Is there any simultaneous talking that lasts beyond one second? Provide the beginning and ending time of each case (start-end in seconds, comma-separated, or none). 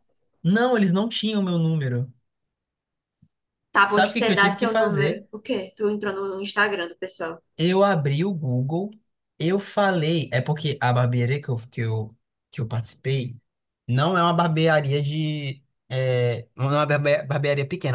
3.9-5.3